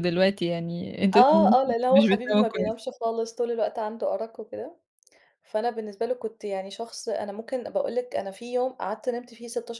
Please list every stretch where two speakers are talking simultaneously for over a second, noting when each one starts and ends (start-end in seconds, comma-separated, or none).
1.1-2.7